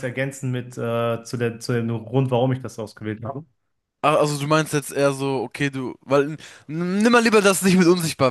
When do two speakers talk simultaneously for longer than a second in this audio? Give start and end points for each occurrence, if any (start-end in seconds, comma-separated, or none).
none